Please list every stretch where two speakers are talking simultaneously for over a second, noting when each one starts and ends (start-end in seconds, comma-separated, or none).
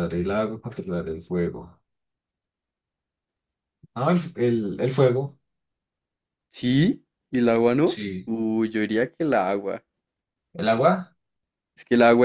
none